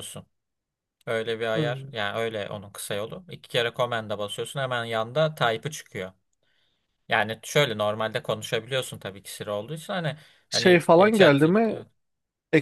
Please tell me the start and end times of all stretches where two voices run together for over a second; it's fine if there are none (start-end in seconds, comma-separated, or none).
10.5-11.8